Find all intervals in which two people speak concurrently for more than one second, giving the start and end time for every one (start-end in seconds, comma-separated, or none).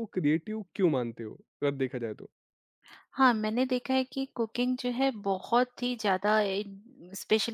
none